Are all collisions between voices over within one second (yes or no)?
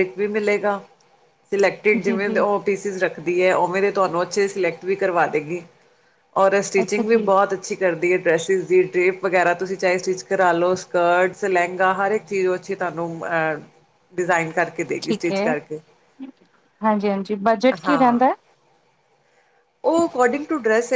yes